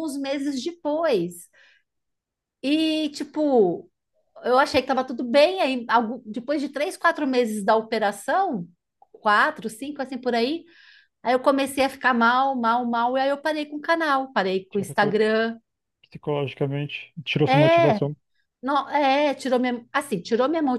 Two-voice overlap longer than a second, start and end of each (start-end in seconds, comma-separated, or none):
none